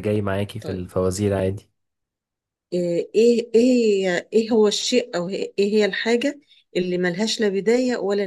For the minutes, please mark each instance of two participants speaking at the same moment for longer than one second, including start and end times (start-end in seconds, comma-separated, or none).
none